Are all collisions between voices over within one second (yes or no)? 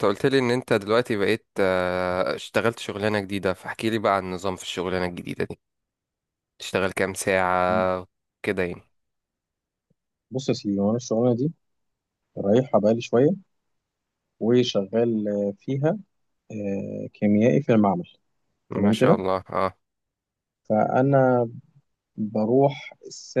yes